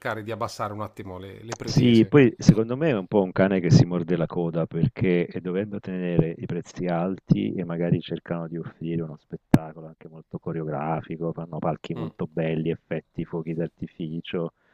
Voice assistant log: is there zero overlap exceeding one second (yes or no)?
yes